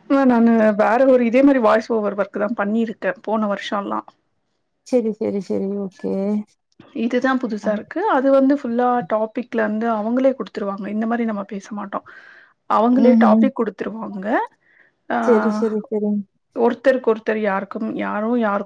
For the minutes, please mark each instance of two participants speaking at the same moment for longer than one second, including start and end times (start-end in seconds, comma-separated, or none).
none